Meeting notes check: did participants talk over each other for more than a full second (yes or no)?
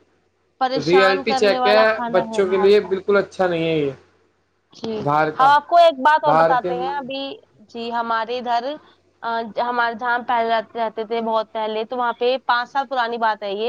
yes